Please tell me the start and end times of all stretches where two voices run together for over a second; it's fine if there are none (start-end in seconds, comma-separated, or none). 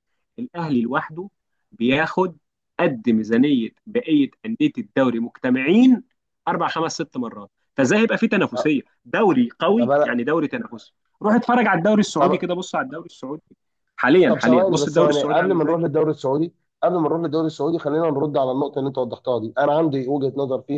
14.3-15.8